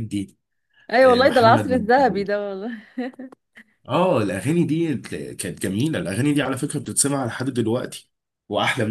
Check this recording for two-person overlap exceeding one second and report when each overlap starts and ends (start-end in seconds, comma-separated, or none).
1.0-2.3